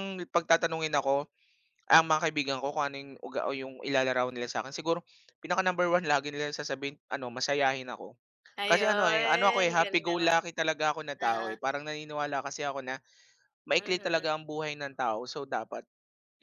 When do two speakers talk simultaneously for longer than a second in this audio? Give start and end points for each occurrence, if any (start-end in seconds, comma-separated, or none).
8.7-10.4